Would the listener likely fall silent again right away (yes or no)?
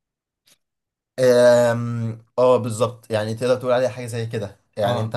yes